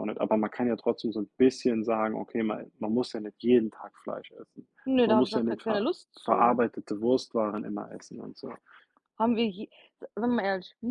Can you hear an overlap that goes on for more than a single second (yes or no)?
yes